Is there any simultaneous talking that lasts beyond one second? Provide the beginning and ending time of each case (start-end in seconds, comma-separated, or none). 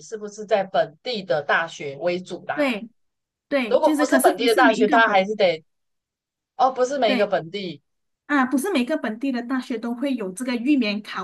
3.7-5.4